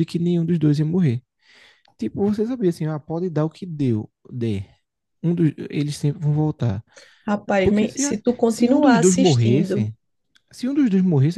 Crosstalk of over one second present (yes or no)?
yes